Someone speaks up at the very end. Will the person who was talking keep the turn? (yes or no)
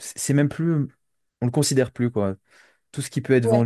yes